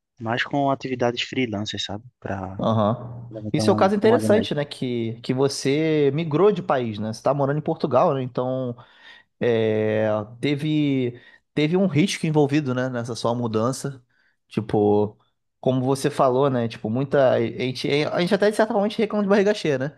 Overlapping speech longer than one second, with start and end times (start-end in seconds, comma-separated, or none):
3.3-4.7